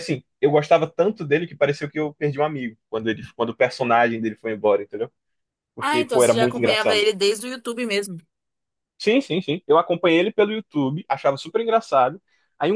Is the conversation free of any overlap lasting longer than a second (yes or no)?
no